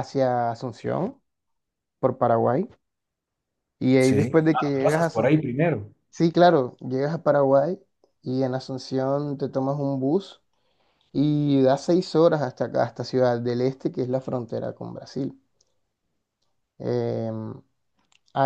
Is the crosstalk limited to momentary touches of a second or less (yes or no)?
no